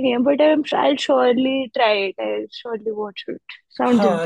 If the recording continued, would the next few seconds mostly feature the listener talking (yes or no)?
yes